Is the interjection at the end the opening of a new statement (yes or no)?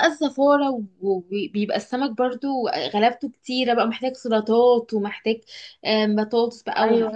no